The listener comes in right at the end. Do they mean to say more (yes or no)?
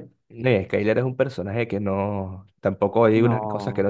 no